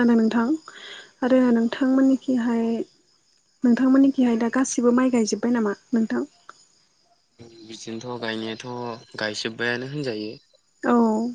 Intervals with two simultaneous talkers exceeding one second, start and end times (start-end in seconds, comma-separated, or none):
none